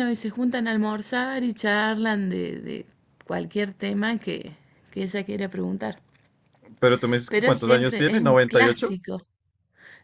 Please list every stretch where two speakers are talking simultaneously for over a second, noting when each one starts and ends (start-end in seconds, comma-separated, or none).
7.3-9.0